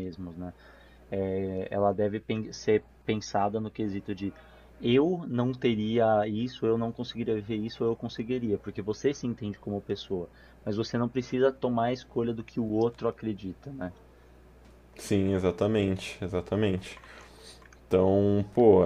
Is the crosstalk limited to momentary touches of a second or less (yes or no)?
yes